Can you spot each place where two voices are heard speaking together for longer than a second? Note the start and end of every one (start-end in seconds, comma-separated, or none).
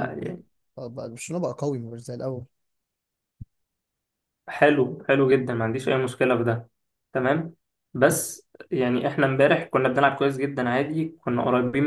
none